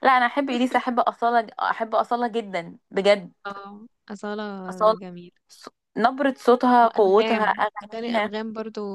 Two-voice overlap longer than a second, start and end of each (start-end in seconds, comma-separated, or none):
6.8-8.3